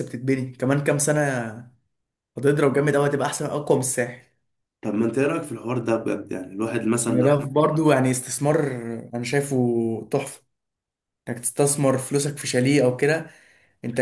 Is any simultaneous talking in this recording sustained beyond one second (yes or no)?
no